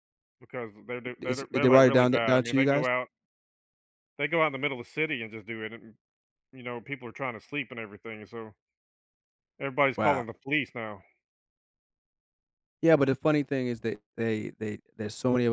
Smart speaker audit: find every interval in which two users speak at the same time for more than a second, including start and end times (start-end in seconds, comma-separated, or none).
1.2-2.9